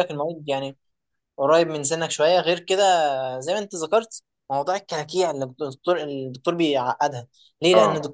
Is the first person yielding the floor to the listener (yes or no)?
no